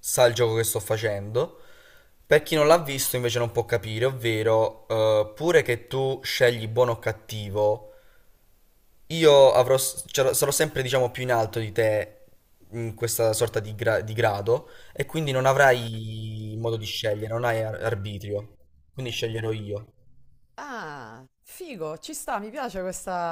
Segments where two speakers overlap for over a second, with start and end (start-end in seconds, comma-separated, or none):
none